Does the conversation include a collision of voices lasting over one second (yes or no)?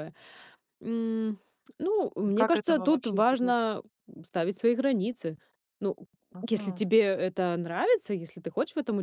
yes